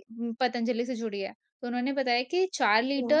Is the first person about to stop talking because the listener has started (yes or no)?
no